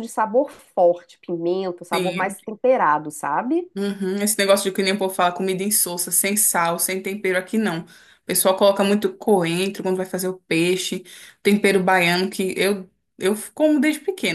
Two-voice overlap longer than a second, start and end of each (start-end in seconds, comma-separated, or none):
none